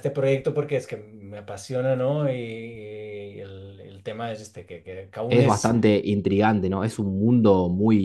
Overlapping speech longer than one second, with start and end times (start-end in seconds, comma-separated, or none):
none